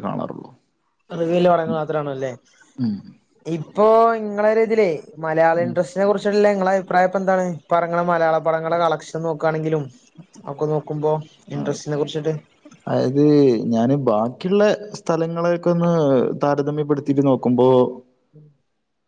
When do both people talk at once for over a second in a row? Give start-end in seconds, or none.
none